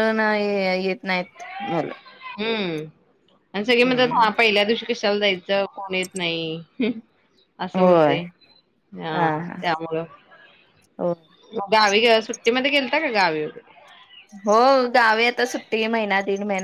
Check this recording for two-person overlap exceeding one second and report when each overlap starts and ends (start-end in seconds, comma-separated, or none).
none